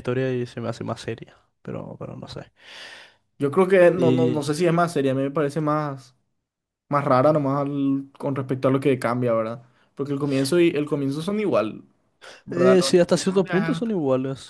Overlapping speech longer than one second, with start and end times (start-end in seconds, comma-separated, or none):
12.5-13.9